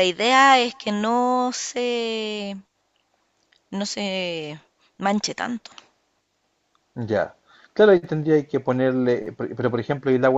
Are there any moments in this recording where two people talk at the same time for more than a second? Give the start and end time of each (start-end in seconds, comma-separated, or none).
none